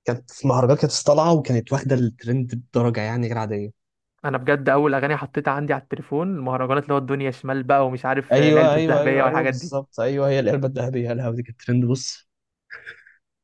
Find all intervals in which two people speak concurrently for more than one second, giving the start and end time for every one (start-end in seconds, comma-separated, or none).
8.3-9.7